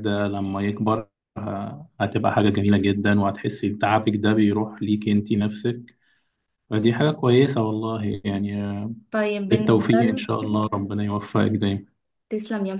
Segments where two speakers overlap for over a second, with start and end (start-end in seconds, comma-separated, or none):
9.5-10.7